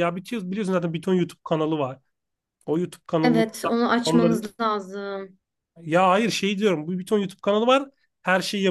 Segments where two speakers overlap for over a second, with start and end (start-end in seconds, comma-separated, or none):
none